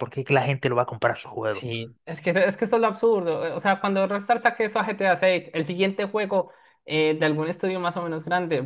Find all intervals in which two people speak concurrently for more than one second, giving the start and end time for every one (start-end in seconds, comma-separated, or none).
none